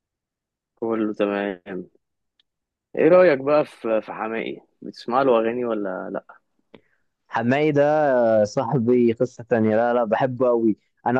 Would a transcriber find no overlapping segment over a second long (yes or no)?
yes